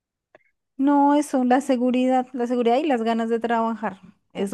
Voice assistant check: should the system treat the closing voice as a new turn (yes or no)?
no